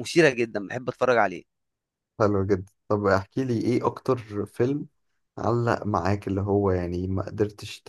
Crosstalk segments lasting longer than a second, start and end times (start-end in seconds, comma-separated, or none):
none